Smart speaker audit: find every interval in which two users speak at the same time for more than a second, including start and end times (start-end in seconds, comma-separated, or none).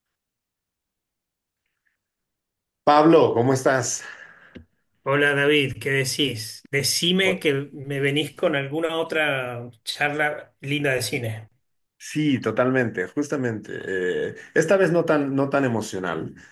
none